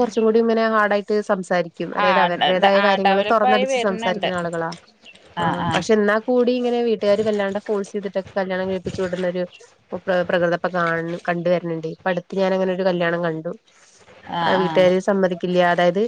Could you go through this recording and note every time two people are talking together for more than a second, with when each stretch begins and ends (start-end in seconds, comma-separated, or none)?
2.0-4.3